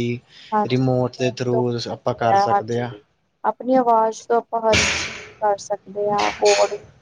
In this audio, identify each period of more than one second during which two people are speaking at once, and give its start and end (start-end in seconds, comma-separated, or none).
0.7-2.9